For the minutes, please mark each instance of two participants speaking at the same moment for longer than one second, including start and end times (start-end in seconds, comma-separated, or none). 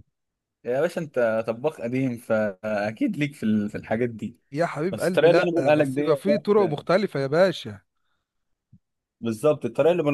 4.9-6.2